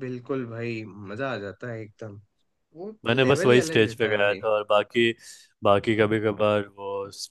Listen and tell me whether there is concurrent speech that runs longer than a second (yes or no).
yes